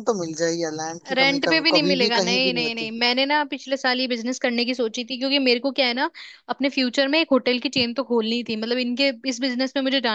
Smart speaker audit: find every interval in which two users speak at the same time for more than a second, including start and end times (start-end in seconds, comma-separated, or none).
1.1-2.9